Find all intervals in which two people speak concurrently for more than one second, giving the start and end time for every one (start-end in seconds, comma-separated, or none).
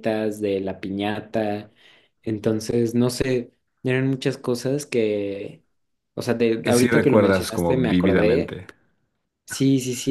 6.6-8.6